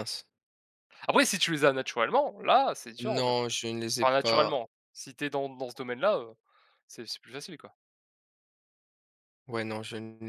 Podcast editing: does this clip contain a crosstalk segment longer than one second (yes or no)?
no